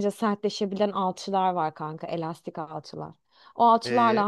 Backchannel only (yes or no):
yes